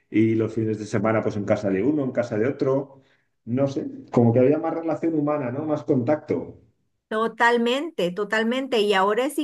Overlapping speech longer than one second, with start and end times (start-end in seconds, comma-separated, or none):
none